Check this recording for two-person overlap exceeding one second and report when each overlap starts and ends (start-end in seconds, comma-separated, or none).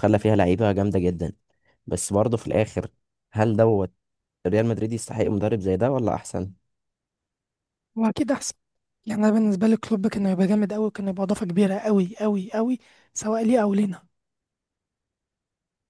none